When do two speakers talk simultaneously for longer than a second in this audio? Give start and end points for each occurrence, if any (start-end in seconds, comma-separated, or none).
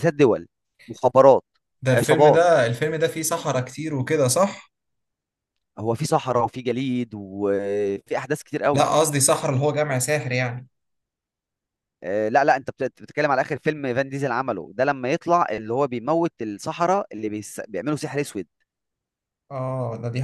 none